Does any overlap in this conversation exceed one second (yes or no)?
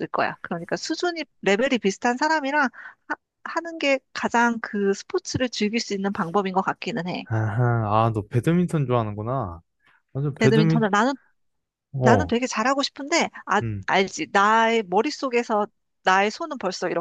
no